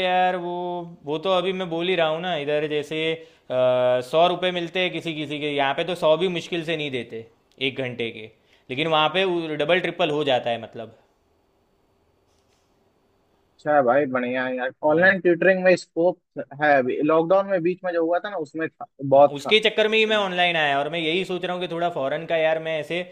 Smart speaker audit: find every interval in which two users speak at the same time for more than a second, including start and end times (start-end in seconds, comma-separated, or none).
none